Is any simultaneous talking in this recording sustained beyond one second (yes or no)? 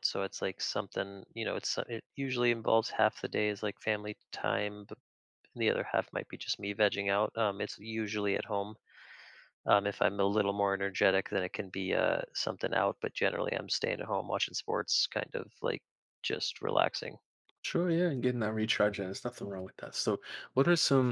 no